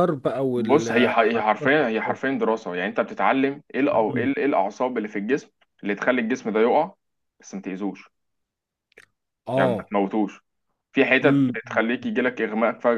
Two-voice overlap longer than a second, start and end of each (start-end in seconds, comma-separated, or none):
0.6-2.2